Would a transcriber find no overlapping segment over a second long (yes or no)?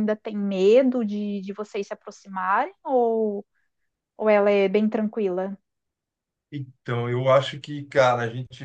yes